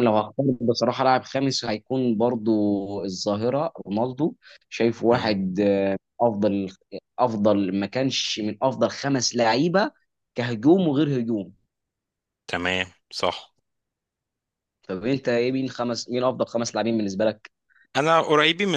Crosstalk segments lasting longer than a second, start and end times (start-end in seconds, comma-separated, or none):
none